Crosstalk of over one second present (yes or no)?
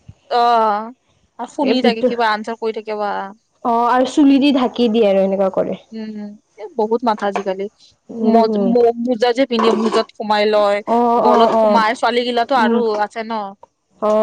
no